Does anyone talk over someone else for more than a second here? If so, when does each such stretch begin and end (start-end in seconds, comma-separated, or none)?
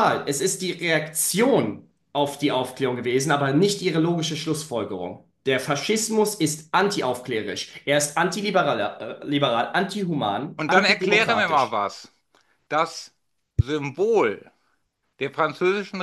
10.6-11.8